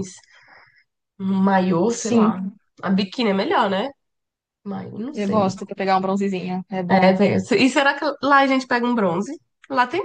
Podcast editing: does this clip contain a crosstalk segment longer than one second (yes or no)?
no